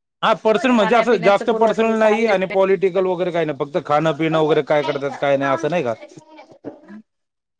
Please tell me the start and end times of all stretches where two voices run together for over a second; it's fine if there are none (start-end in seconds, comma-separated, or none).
0.8-2.3